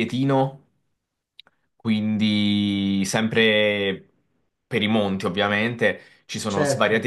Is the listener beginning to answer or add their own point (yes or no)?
no